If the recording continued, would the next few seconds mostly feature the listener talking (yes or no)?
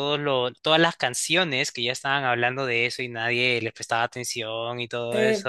yes